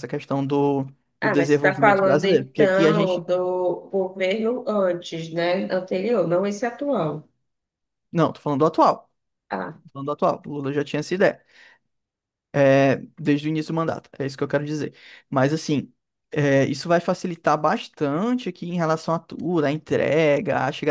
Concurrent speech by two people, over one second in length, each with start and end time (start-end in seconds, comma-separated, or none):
1.2-3.2